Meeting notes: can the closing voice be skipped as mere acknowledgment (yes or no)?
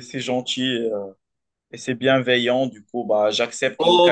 no